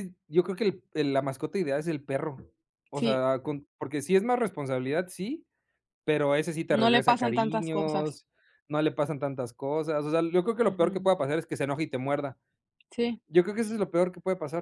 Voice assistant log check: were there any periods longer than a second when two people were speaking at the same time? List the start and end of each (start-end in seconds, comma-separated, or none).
6.7-8.2